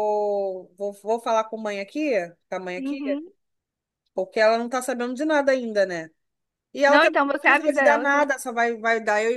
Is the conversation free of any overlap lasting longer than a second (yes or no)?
no